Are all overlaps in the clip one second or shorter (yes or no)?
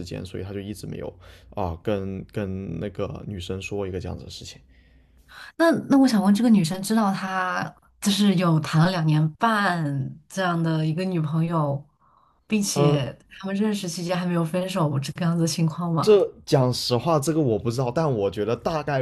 yes